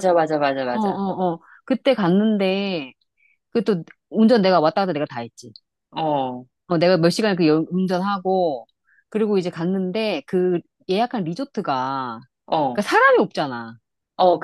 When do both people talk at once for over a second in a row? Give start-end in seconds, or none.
none